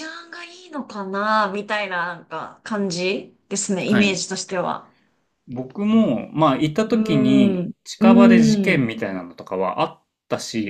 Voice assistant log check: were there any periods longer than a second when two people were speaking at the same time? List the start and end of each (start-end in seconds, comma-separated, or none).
6.9-8.9